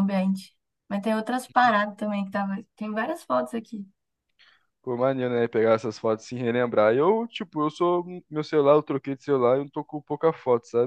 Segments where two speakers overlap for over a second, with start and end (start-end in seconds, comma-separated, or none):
none